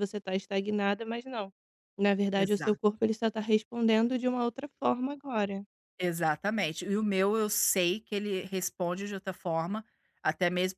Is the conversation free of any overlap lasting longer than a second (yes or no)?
yes